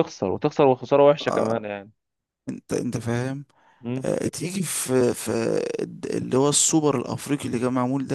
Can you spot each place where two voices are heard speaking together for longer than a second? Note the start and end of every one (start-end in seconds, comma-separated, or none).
none